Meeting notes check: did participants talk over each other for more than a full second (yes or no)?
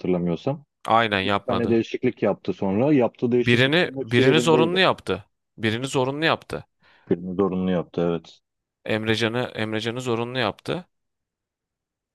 yes